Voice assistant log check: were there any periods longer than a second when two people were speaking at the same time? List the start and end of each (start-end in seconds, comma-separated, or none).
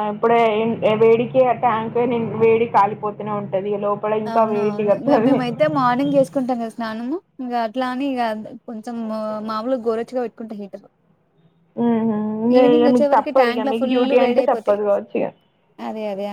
12.6-14.8